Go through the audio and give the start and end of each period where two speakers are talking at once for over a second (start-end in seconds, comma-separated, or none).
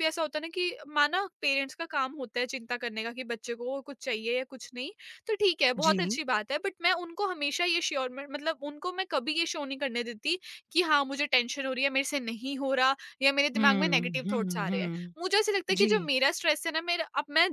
13.6-15.1